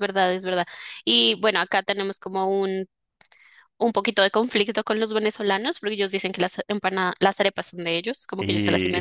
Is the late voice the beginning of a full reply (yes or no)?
no